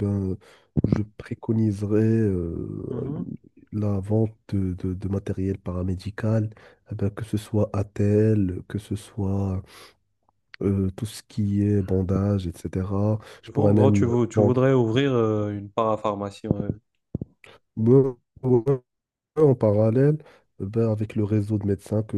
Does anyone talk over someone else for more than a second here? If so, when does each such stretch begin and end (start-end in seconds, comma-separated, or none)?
13.5-14.8